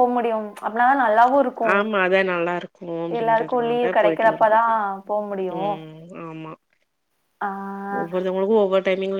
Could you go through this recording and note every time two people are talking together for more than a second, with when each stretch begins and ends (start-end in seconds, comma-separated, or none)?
3.2-4.6